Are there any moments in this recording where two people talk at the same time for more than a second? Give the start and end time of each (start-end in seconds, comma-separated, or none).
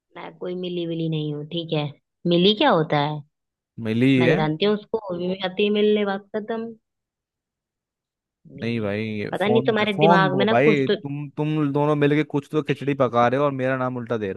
8.6-11.0